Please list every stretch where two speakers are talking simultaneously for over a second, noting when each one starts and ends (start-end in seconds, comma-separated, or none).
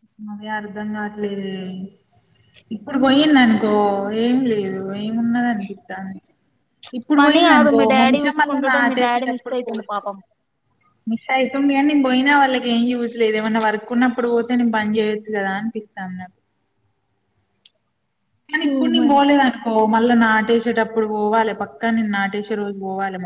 7.2-9.9